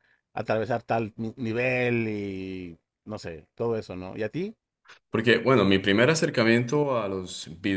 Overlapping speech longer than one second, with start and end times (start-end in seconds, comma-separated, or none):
none